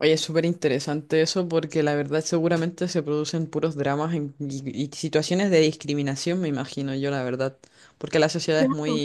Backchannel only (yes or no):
yes